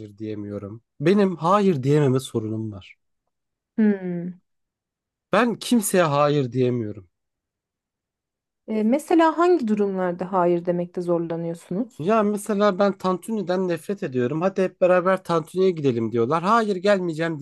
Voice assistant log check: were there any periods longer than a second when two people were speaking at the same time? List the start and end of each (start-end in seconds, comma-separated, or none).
none